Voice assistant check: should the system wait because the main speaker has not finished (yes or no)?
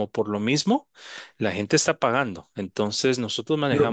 no